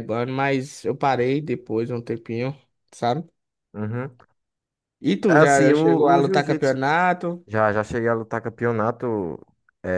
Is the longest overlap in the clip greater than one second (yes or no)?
yes